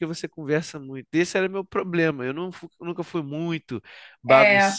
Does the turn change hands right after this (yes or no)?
no